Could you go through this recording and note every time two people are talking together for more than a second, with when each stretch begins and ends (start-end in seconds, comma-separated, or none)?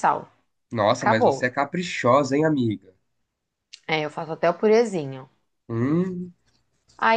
none